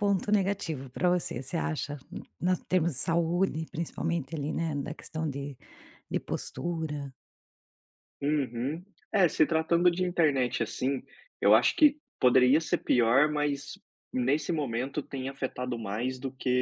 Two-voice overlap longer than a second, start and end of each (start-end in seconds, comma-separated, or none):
none